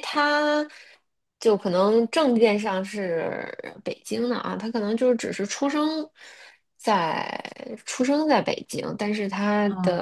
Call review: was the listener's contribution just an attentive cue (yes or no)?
yes